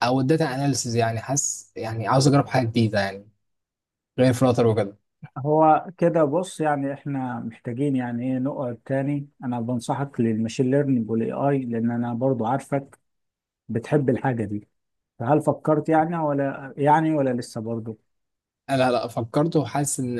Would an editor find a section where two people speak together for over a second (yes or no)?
no